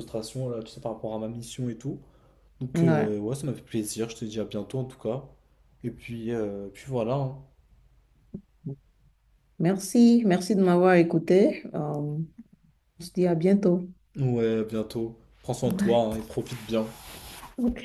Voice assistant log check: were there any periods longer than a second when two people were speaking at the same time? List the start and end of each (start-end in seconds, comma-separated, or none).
none